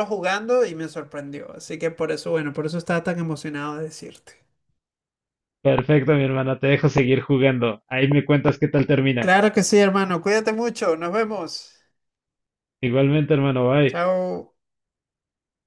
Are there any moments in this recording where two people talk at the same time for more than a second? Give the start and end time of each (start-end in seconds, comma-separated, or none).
none